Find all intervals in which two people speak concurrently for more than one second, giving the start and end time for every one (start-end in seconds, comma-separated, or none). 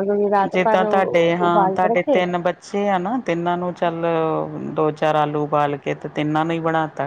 0.5-2.2